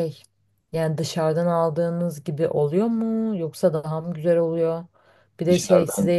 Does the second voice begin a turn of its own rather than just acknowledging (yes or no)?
no